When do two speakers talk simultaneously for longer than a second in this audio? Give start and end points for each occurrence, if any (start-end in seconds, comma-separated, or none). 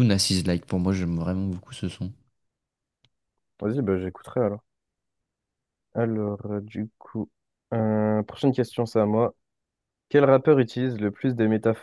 none